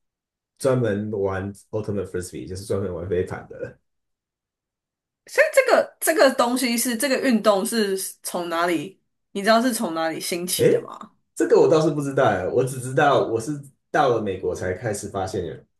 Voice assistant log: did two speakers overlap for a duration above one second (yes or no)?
no